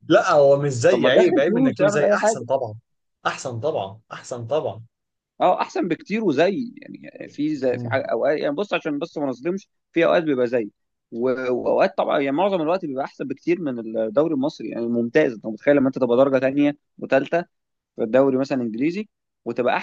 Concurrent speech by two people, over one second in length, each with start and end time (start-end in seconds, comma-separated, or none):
0.9-2.5